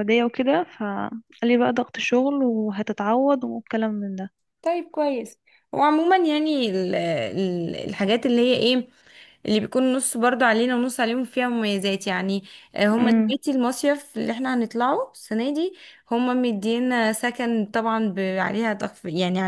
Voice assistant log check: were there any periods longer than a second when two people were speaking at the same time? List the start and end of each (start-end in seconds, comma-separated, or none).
none